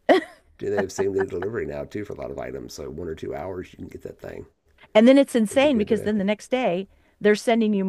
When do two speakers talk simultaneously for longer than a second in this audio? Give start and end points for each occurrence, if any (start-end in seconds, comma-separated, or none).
none